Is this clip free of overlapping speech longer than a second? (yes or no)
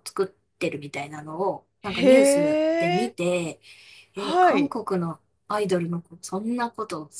no